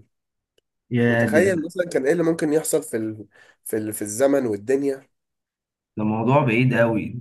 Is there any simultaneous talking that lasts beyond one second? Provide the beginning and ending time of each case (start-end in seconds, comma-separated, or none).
none